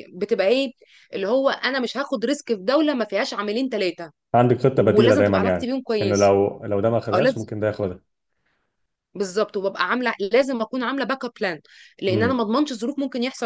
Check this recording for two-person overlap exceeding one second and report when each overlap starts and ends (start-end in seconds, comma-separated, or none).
4.7-6.3